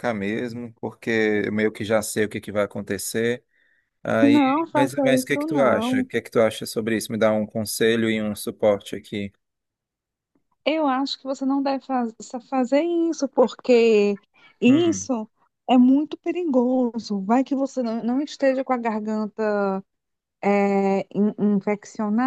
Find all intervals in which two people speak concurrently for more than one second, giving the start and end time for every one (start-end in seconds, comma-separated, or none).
4.2-6.1